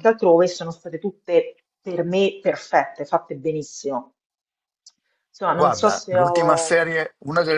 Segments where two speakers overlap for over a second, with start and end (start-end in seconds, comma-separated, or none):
5.5-6.8